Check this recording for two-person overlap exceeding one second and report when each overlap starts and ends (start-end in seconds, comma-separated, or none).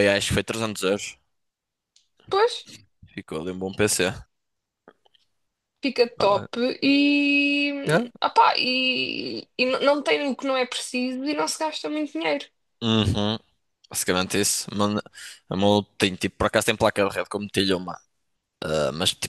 none